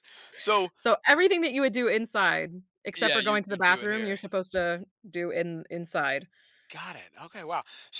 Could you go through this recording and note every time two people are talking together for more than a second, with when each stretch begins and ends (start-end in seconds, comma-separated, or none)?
3.0-4.2